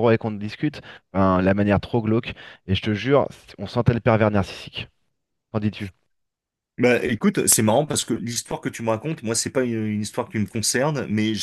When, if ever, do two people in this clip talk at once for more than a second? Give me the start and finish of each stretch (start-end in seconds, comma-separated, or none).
none